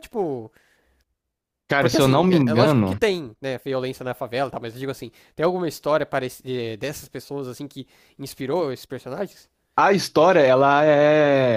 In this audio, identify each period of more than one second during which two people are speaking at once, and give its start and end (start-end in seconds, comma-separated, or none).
1.8-3.0